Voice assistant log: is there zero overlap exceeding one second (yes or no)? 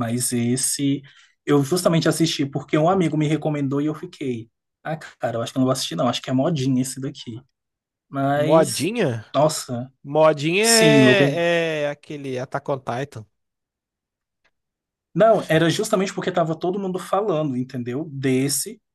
yes